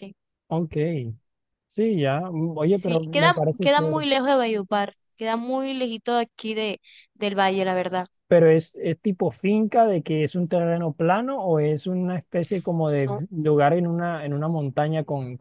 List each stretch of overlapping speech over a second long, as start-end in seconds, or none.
2.6-4.0